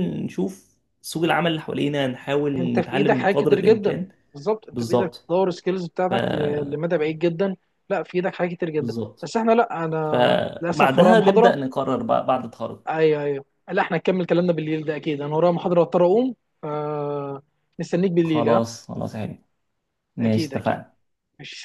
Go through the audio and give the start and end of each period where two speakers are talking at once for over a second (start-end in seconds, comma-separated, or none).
2.6-4.1, 10.0-11.6